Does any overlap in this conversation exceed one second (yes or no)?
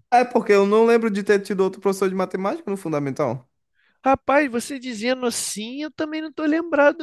no